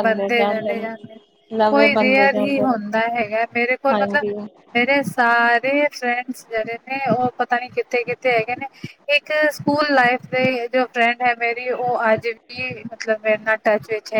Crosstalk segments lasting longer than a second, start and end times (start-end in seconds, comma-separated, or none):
1.7-3.0